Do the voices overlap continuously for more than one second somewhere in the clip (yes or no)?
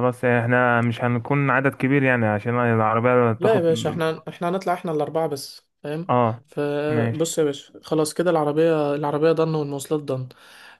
no